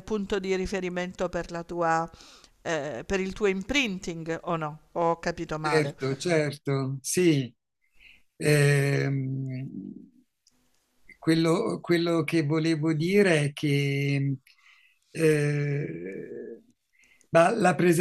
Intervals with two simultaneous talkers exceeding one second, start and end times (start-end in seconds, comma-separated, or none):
none